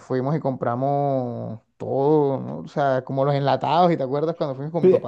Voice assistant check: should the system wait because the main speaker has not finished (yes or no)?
no